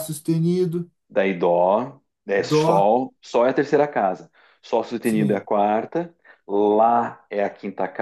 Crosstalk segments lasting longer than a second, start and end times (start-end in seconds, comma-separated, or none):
none